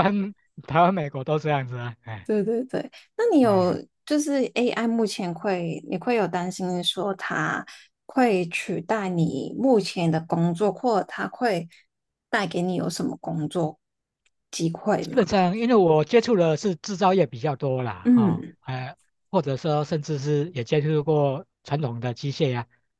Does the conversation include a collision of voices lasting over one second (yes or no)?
no